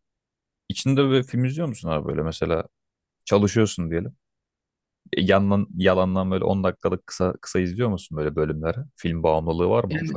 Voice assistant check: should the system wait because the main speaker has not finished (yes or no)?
no